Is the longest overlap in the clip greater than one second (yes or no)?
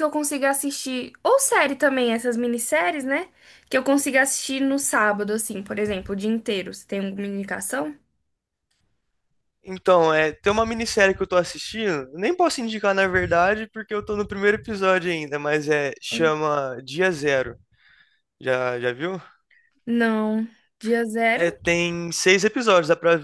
no